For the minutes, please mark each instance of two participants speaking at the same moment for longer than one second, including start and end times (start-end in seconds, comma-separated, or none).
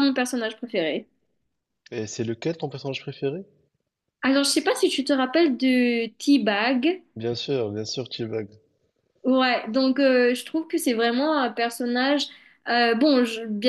none